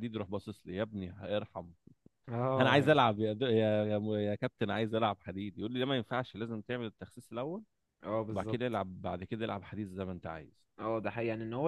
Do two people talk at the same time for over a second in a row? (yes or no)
no